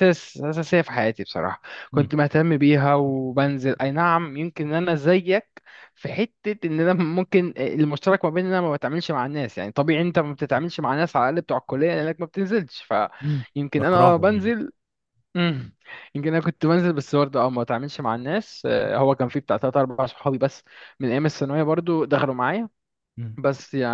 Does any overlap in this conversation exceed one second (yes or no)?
yes